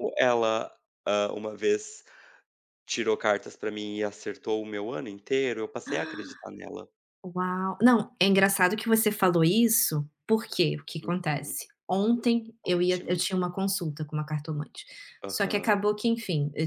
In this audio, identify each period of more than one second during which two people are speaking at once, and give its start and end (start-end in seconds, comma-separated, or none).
none